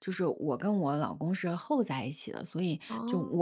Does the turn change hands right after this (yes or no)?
no